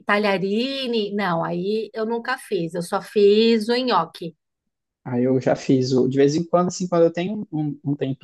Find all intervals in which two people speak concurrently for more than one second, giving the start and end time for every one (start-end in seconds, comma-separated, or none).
none